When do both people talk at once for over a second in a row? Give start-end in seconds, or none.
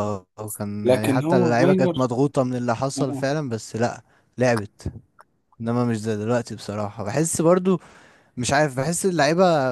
0.8-2.1